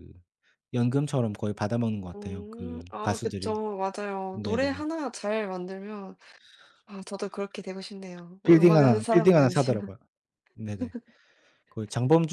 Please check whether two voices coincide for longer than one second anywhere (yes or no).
yes